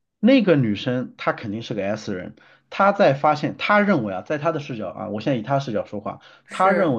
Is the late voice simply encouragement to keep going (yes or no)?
yes